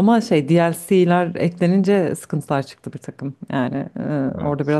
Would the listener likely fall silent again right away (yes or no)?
yes